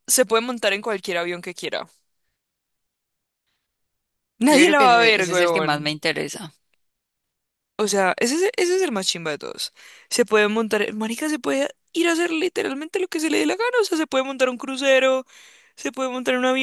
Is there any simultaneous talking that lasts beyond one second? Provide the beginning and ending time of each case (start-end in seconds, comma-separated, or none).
4.5-6.0